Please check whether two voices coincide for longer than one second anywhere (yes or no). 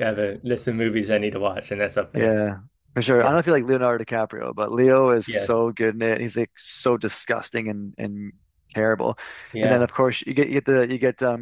no